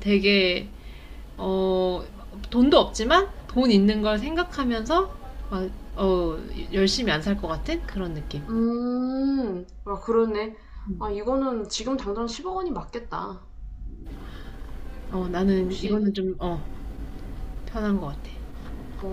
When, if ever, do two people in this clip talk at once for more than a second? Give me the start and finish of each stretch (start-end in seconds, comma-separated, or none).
none